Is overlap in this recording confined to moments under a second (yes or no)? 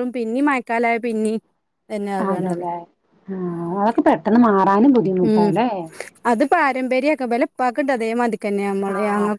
yes